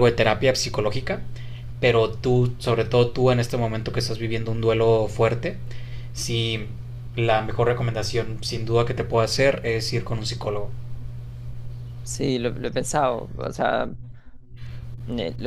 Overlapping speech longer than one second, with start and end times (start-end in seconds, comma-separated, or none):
none